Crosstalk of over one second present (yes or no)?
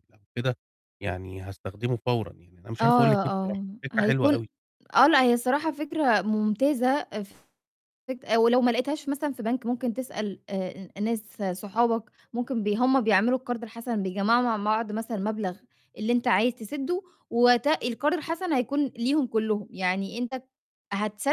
yes